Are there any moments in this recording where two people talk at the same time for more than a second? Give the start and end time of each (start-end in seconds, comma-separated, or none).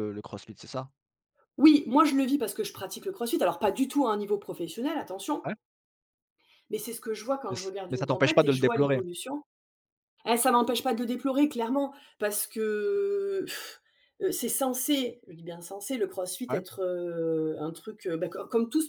7.5-9.0